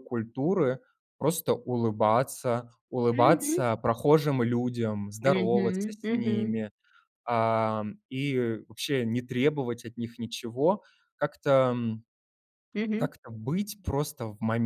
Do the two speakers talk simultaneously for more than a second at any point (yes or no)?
yes